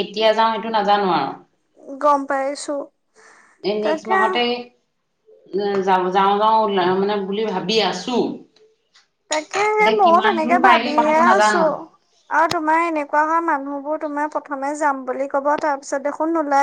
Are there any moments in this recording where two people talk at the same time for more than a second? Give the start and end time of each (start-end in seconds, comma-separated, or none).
9.8-11.6